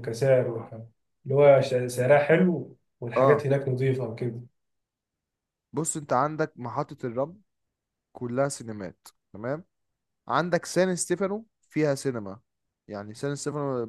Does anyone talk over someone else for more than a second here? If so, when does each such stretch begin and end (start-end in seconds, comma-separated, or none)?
none